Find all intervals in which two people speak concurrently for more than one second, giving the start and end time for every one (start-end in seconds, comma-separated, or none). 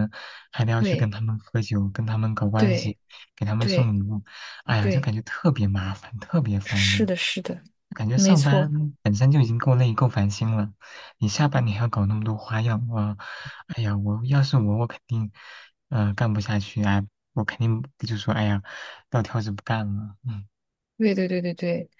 none